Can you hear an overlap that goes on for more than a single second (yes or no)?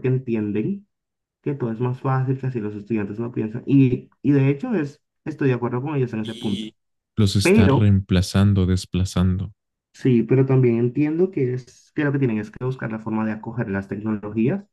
no